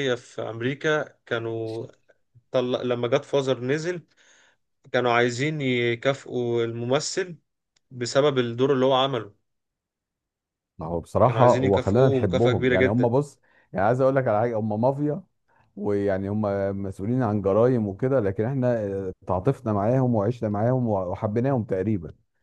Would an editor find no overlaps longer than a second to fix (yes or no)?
no